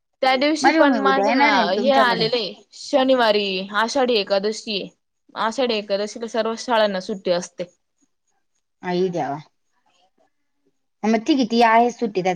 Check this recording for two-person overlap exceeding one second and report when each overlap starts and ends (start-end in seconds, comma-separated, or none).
0.6-2.3